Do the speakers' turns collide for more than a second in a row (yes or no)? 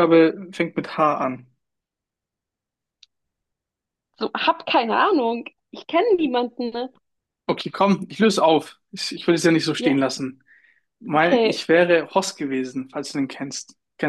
no